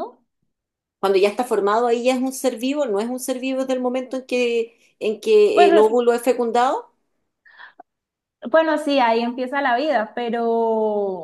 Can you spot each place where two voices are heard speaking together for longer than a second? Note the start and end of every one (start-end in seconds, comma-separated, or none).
none